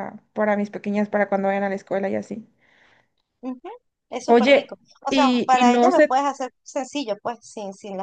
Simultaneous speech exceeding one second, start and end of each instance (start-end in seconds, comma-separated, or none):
4.3-6.1